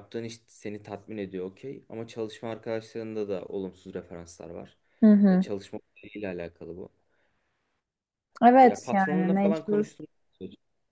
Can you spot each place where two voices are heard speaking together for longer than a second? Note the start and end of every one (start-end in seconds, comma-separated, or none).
8.6-9.9